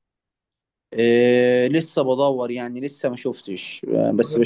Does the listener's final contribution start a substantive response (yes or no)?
no